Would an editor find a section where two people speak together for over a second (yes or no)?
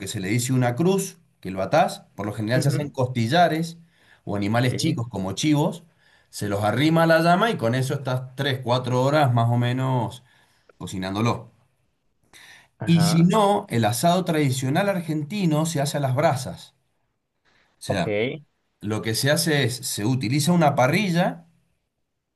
no